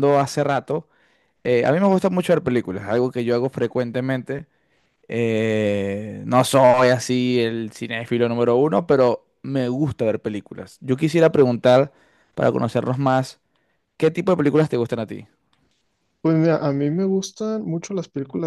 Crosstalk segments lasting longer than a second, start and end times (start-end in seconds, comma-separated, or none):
none